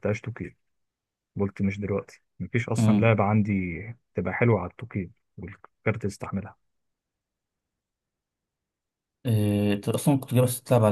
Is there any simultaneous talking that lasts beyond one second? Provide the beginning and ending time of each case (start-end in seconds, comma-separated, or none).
none